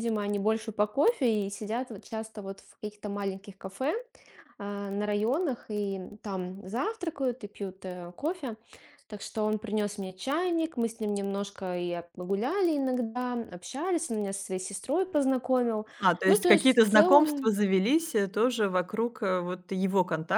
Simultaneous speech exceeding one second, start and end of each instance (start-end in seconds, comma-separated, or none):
16.3-17.5